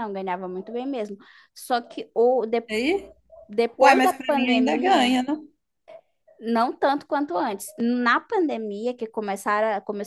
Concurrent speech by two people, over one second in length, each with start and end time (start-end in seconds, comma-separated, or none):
3.8-5.2